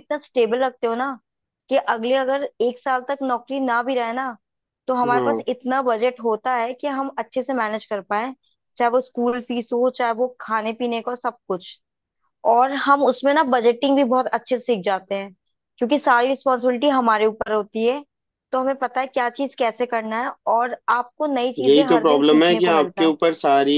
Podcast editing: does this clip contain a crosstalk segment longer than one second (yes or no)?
yes